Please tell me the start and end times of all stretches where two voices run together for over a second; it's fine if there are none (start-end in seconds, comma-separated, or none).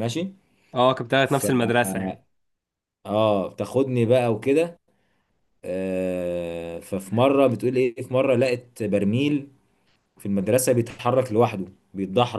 none